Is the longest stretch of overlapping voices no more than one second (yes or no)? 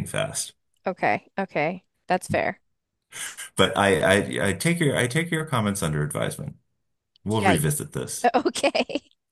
yes